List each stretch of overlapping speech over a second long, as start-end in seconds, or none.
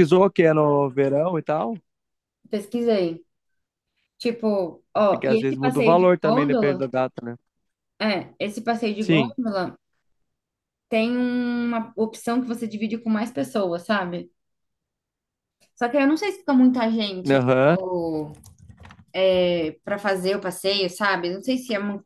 5.1-6.9